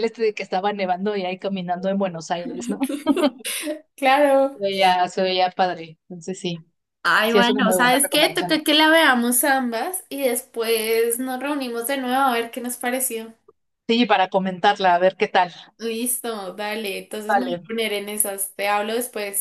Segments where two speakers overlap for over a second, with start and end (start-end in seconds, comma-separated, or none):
7.3-8.6